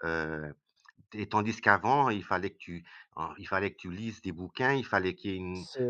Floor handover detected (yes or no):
no